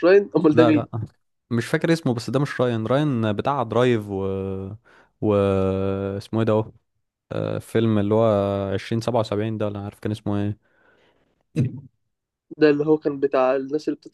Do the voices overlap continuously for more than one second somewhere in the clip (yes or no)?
no